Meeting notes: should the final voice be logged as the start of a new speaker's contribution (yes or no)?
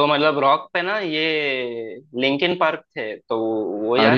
yes